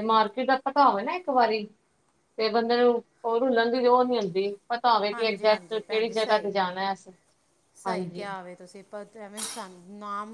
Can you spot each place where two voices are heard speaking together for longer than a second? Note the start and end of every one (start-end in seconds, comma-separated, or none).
5.1-6.5